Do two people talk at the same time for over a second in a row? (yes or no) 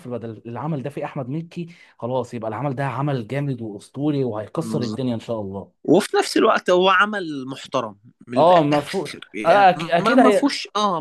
yes